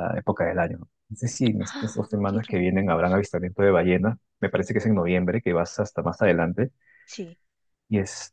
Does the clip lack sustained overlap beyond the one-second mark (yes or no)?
no